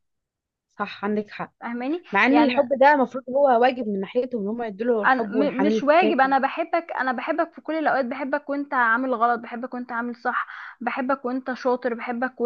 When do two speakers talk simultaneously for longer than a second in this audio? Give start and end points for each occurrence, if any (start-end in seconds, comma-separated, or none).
5.0-6.4